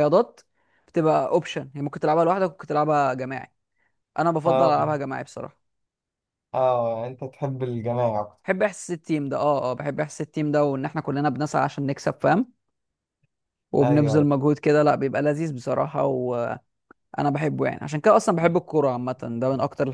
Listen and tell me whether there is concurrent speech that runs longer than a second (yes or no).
no